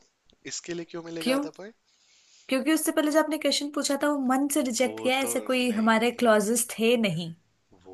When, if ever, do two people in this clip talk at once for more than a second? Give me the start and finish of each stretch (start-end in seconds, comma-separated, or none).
4.8-6.2